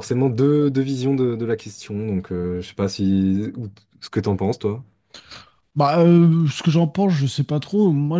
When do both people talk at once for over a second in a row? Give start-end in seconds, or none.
none